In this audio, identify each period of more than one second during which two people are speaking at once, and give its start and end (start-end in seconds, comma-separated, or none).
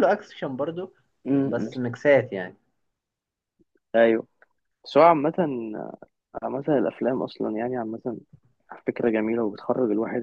none